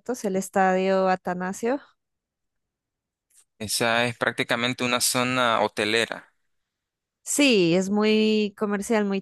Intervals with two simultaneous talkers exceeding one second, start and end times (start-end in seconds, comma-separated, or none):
none